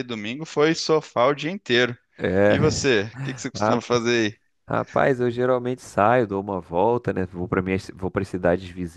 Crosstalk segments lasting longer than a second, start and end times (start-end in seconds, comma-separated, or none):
none